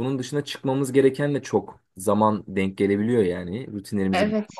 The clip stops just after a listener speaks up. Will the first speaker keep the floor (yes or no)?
yes